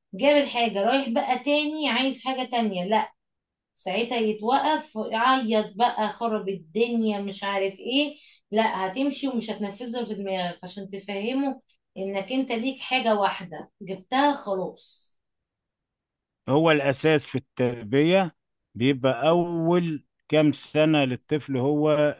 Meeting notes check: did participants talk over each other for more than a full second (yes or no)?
no